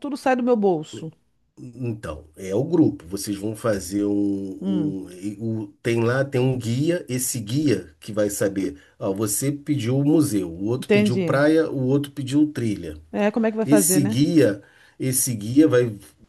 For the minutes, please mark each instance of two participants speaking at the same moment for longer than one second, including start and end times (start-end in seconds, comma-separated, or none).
none